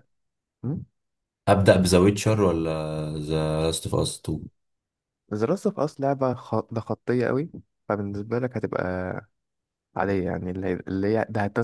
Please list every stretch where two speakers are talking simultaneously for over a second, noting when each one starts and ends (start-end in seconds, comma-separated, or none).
none